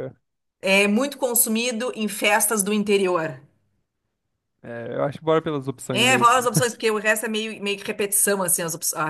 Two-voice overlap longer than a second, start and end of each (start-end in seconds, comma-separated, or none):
none